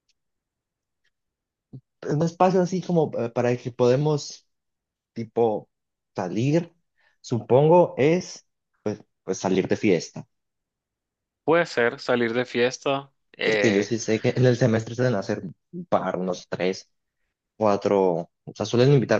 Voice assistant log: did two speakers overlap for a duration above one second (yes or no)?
no